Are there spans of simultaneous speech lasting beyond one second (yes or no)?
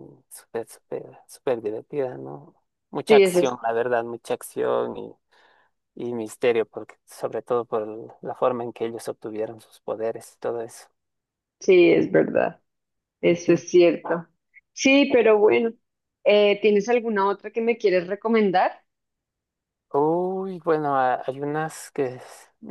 no